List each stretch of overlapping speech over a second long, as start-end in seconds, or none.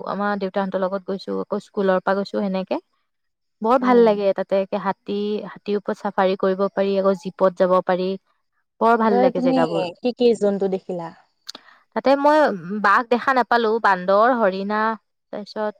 none